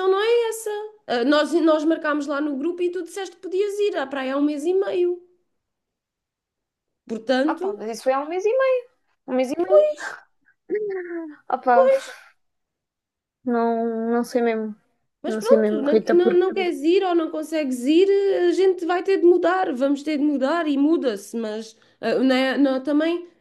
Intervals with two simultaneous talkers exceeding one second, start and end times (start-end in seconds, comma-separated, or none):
15.3-16.7